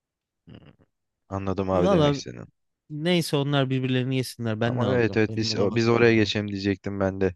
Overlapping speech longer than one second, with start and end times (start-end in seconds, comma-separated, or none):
4.6-6.3